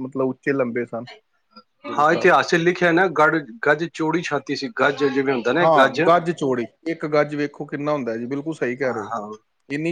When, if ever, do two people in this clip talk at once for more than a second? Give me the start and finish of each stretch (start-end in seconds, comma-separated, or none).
none